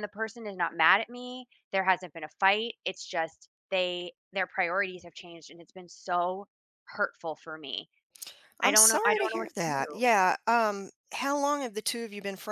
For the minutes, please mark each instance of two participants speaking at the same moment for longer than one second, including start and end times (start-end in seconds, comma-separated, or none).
8.6-10.0